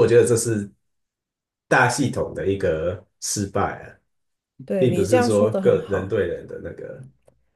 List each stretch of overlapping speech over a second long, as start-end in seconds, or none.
4.8-6.2